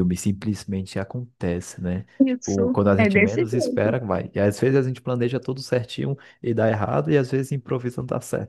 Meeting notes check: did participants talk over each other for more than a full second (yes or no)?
yes